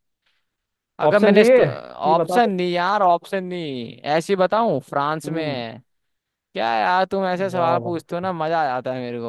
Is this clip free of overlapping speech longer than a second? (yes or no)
no